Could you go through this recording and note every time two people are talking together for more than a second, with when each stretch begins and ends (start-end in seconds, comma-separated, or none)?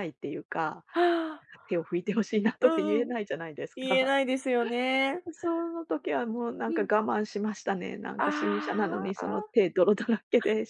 8.2-9.5